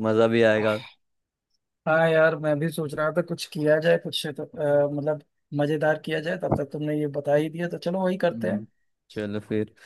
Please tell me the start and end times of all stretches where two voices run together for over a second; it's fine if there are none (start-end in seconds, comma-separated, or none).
none